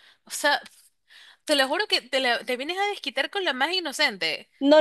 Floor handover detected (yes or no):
yes